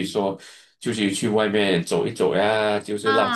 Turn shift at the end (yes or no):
yes